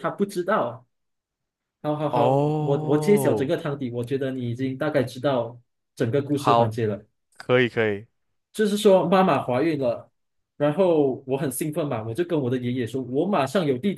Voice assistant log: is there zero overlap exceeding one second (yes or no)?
no